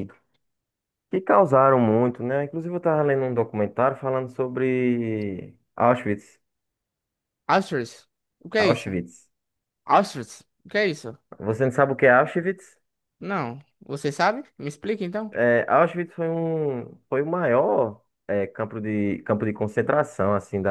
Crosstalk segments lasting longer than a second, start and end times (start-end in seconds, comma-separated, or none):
none